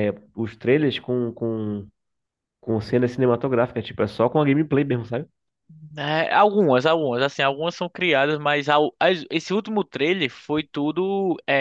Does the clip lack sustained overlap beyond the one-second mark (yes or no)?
yes